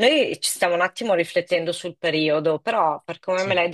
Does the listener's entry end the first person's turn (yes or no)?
no